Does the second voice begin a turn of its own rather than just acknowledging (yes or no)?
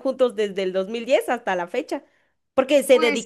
no